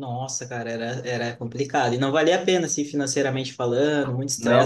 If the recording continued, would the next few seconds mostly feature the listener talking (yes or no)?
no